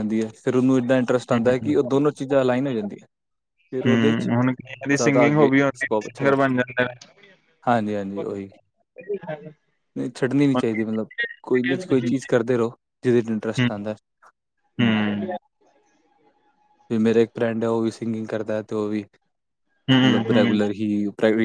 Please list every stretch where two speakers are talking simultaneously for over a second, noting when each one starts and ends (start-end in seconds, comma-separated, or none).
4.9-6.6